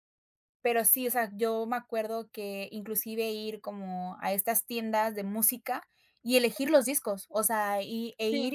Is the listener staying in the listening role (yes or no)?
yes